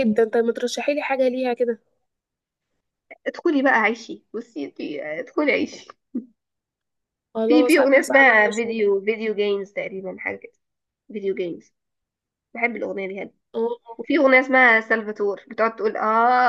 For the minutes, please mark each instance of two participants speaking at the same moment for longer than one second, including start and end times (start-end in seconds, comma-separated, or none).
7.5-8.8